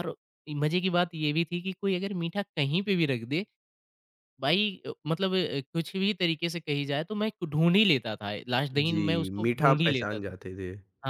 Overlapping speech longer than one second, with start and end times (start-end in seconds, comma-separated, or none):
8.7-10.3